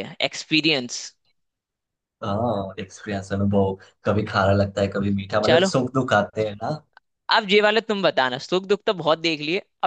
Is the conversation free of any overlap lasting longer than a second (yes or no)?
yes